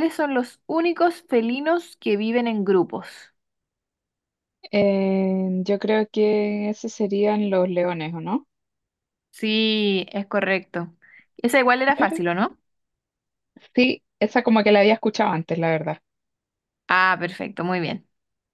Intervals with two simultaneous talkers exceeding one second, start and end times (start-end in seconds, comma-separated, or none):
none